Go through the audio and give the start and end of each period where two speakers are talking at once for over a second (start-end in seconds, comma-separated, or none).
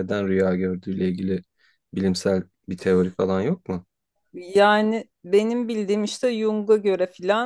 none